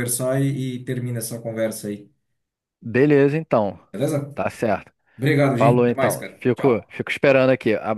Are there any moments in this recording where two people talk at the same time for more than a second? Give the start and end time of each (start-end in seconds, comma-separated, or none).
5.5-6.9